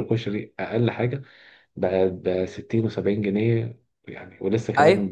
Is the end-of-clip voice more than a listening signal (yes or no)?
yes